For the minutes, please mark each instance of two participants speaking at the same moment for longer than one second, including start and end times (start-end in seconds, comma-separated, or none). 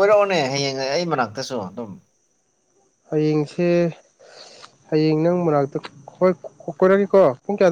none